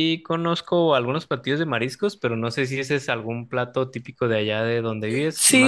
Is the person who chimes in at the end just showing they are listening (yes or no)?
no